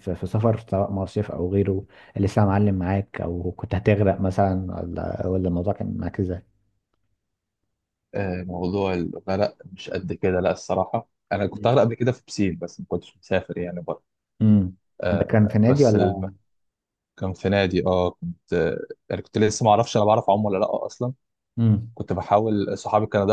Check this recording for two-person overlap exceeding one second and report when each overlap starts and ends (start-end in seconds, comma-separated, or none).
15.1-16.3